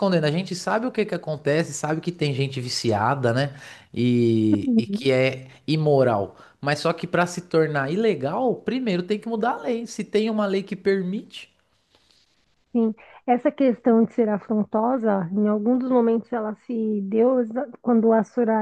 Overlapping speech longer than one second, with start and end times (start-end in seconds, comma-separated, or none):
none